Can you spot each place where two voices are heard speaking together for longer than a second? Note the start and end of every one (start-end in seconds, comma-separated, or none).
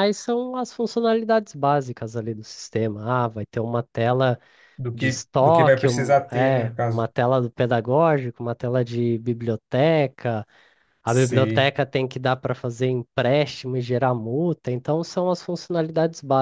4.9-7.1